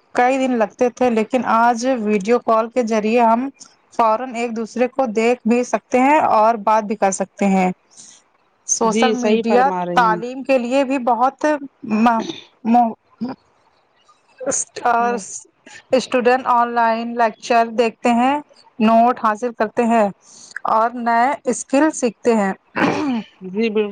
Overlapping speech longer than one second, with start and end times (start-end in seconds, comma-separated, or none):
8.9-10.4